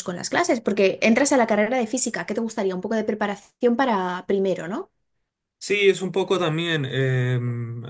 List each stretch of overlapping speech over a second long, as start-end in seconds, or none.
none